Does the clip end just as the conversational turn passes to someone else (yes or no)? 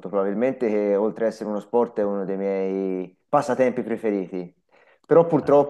no